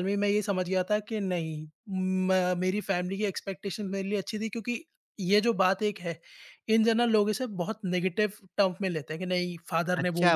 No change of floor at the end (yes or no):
no